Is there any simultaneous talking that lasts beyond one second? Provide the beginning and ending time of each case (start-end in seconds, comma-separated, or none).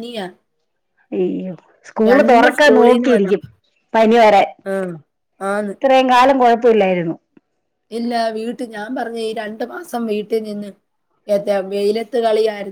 2.1-3.4